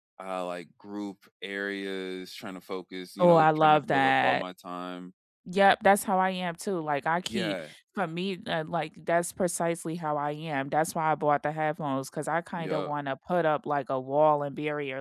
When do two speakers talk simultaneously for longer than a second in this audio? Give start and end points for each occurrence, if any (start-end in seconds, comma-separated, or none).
3.2-4.5